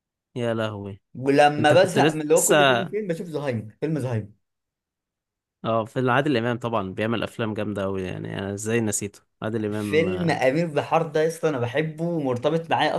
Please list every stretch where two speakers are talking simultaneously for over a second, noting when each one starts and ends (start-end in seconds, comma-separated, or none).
1.6-2.9